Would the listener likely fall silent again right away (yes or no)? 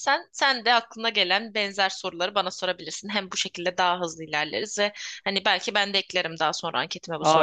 no